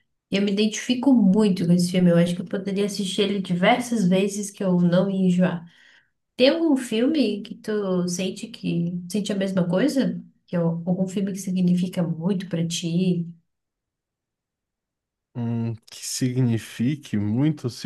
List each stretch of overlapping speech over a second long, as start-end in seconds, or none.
none